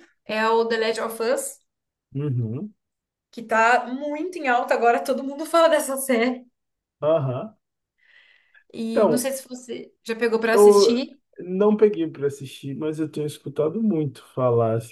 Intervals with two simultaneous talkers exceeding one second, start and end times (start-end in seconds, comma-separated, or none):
none